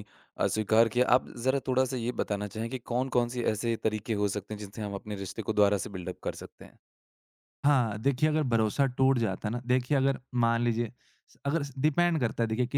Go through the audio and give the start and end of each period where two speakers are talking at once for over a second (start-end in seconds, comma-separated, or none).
none